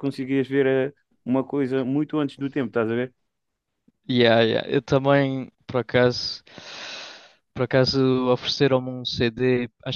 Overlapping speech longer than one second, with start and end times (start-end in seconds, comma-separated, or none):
none